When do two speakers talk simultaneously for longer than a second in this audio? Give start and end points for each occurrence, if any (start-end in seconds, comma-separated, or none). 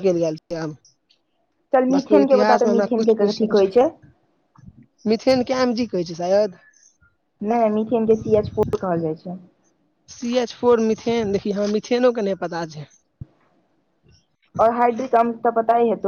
2.0-3.7